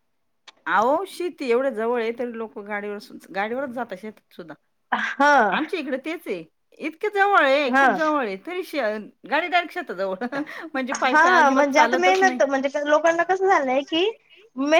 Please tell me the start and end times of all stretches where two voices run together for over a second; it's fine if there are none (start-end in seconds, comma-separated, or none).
none